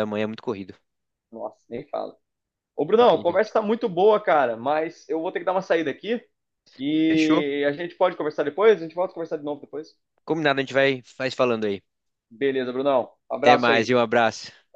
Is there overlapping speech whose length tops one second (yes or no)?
no